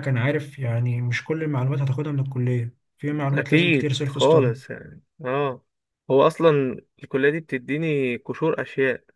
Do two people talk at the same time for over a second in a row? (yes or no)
yes